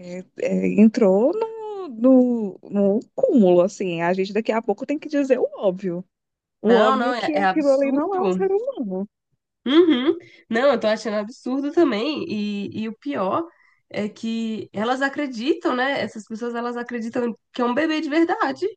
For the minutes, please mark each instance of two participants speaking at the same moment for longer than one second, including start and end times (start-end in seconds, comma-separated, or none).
6.6-8.5